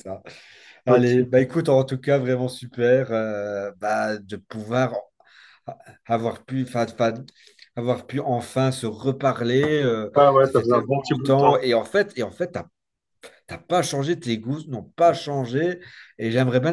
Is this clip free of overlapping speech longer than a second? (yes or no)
no